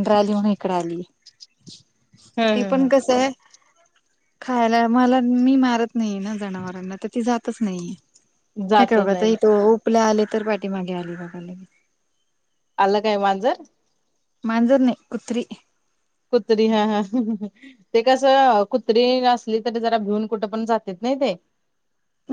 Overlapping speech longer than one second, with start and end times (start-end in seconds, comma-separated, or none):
none